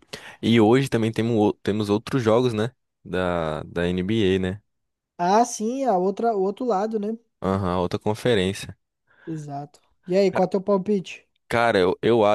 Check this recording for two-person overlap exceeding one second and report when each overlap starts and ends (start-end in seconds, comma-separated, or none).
none